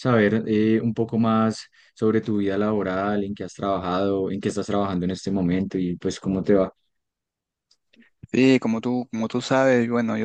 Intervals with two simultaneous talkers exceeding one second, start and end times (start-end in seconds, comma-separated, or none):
none